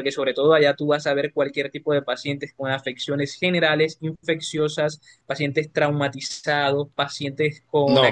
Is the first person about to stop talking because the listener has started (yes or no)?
no